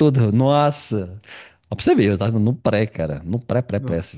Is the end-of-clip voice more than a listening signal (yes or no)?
no